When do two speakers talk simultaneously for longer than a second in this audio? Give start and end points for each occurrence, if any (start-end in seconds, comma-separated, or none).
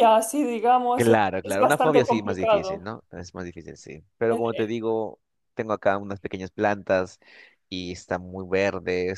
0.9-2.9